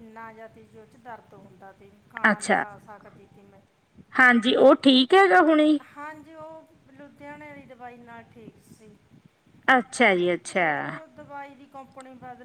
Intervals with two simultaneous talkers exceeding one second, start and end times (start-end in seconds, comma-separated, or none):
none